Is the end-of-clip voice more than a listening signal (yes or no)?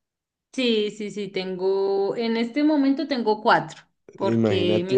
yes